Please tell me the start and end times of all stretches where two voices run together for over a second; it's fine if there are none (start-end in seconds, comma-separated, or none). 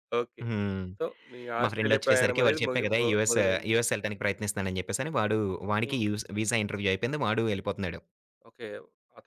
1.6-3.7